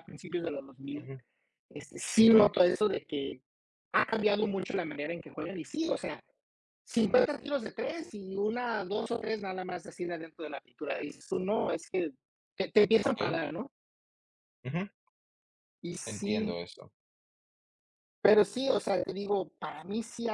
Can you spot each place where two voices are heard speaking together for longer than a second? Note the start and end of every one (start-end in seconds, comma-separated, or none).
none